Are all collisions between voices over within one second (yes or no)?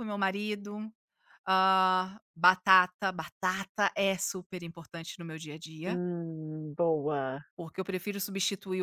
yes